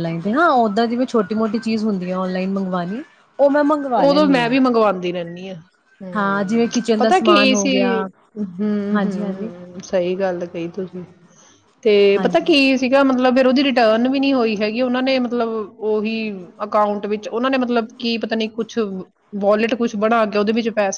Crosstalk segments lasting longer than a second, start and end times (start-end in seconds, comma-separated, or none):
6.2-7.9